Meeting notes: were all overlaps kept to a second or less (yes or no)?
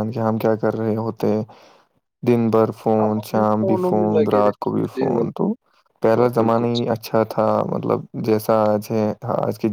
no